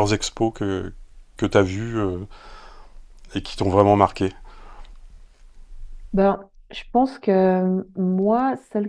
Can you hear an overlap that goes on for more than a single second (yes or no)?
no